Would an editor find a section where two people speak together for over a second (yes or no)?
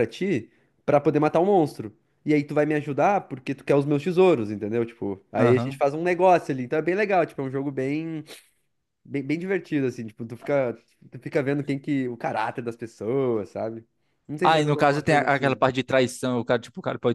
yes